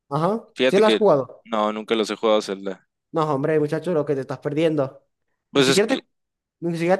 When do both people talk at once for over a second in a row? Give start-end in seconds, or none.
none